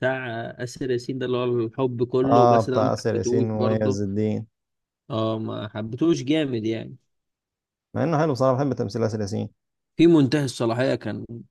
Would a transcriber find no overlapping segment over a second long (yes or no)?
no